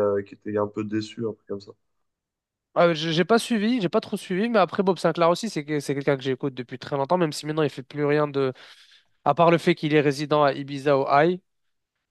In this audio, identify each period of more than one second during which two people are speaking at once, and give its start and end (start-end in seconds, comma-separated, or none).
none